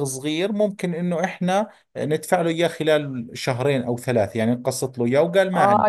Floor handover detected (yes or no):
yes